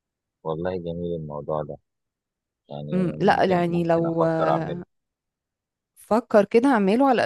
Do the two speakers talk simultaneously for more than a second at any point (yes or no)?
yes